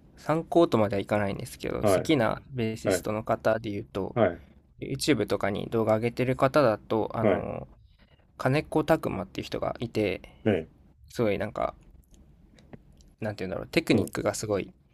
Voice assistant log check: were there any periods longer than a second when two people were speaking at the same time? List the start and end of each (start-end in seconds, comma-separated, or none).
none